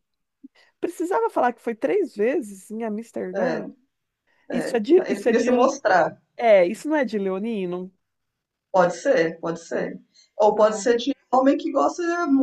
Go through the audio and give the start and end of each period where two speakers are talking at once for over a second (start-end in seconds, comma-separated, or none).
4.5-5.8